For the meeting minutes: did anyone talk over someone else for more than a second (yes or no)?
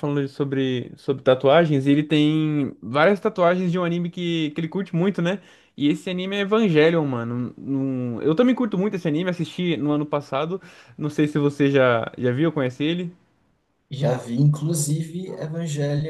no